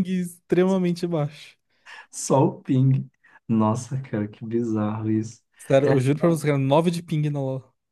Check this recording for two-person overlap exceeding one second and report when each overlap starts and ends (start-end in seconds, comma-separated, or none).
none